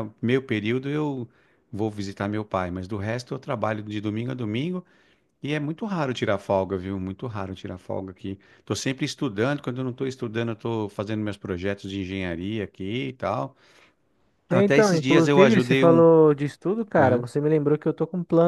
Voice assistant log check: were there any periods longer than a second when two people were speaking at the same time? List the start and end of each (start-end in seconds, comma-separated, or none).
14.5-16.0